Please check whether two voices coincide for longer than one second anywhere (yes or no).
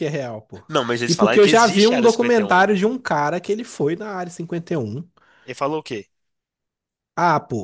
yes